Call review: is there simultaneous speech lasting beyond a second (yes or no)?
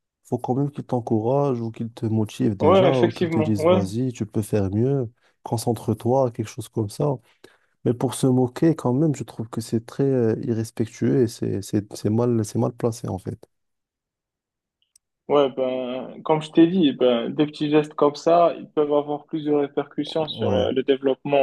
yes